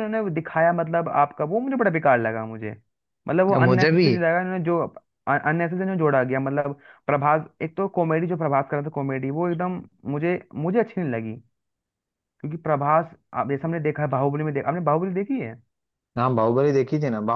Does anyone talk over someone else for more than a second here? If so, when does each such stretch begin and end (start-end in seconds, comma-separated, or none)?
none